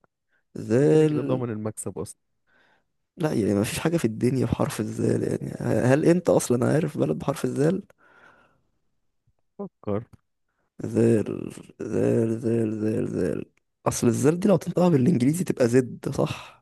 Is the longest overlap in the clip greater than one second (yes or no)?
no